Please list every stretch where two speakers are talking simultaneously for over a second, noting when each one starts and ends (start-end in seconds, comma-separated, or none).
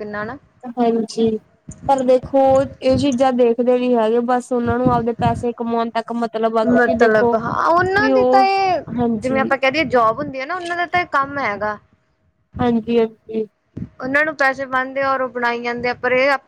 none